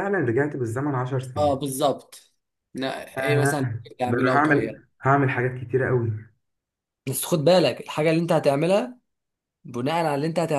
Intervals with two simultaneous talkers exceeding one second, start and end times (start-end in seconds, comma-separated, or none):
3.2-4.8